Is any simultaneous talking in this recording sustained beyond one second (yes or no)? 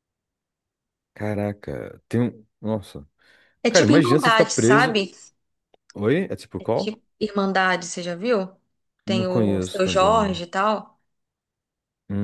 yes